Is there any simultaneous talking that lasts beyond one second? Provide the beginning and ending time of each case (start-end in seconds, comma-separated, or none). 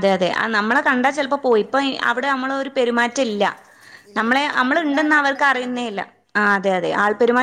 4.2-5.8